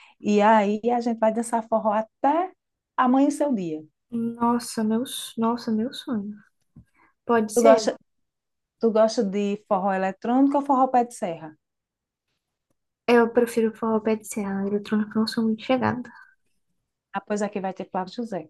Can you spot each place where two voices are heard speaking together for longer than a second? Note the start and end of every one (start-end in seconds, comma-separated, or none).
none